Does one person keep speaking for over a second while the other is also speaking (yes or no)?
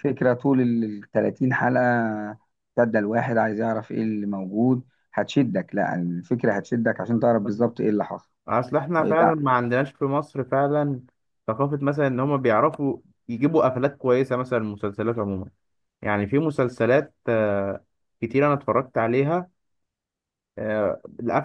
no